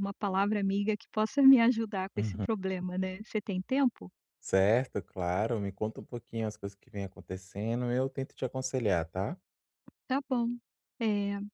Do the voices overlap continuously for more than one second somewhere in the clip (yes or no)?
no